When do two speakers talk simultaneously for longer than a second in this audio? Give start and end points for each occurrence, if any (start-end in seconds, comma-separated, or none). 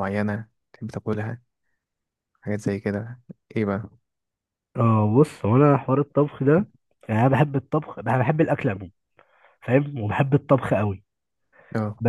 none